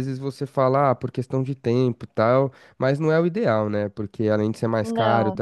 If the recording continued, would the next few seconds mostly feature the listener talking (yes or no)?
no